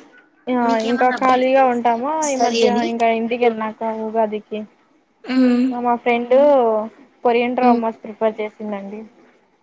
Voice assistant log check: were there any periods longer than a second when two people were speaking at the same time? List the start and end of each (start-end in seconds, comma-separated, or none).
0.7-2.8